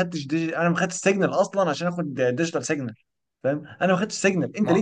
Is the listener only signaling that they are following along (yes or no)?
yes